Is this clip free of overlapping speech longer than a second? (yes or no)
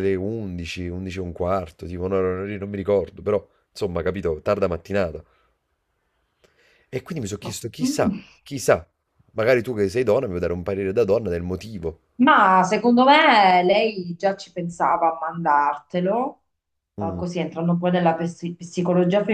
yes